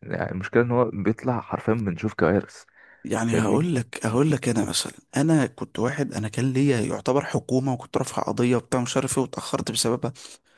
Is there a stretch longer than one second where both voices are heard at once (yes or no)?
no